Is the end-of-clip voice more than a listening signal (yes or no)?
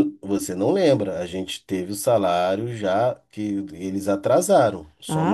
yes